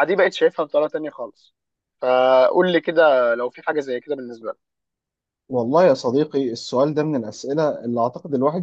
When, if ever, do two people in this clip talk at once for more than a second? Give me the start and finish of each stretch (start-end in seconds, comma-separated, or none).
none